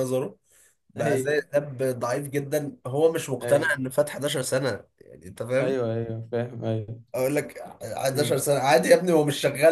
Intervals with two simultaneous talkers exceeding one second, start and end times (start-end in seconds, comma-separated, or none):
none